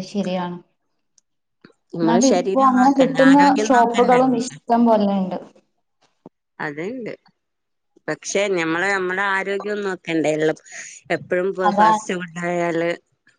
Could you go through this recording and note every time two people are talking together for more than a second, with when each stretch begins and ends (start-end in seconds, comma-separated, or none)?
2.0-4.5